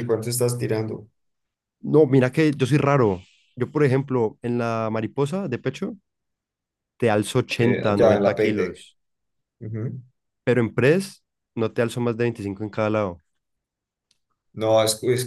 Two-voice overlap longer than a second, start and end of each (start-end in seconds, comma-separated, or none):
7.6-8.9